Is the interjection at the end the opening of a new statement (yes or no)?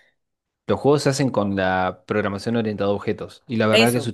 no